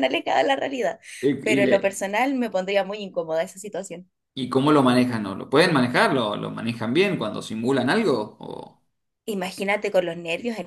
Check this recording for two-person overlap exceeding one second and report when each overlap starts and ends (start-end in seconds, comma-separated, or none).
none